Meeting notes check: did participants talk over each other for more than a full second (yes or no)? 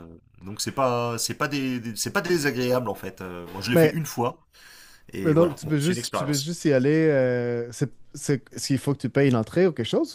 yes